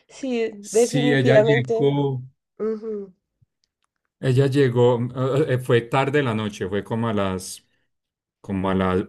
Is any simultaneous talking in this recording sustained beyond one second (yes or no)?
yes